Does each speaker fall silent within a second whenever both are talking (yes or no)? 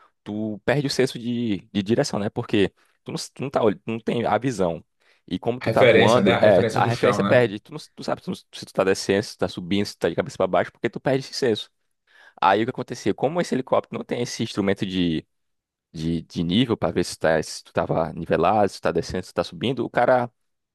no